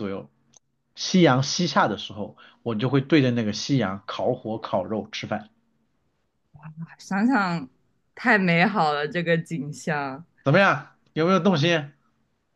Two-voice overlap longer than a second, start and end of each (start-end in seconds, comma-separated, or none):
none